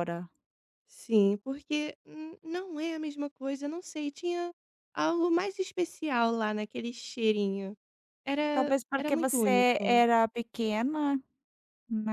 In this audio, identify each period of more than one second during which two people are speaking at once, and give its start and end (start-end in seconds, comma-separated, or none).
8.5-10.1